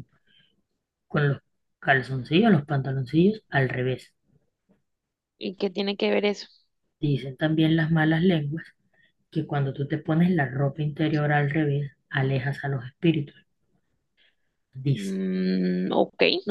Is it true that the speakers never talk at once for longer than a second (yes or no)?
yes